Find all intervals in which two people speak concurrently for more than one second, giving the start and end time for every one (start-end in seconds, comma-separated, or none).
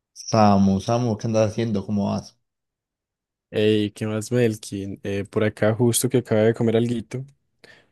none